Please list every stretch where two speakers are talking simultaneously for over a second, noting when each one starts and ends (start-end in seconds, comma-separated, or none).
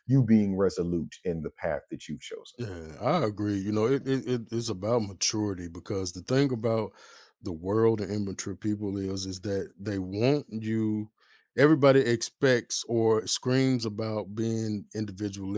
none